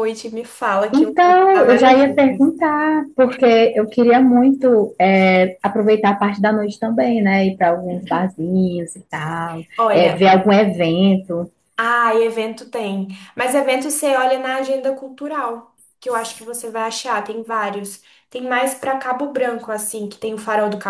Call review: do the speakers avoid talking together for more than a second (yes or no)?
no